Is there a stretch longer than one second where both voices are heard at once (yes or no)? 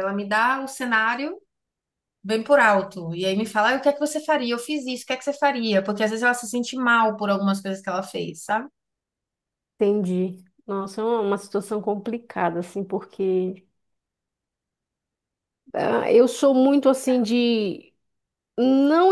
no